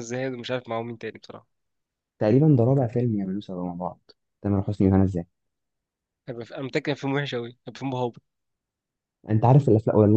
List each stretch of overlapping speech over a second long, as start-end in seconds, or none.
none